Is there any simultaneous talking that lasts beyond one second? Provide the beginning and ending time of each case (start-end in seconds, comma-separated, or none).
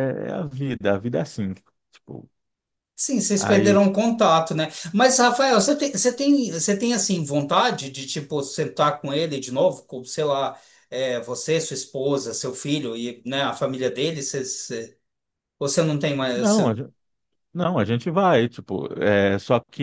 none